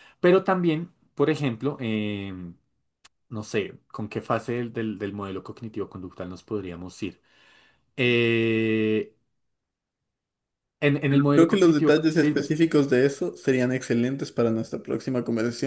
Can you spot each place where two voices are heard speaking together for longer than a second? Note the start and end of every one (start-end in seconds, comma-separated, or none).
11.1-12.3